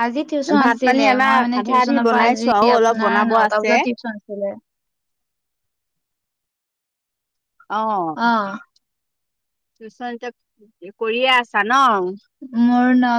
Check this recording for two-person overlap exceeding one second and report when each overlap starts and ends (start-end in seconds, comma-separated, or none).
0.6-3.7